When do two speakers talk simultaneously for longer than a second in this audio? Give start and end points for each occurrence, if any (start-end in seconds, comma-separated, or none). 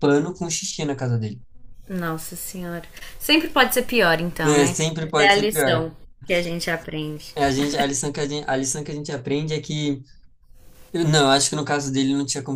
4.5-5.8